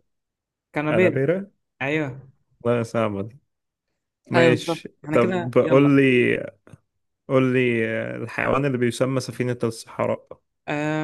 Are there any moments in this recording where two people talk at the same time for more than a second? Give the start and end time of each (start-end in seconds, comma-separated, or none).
4.3-6.0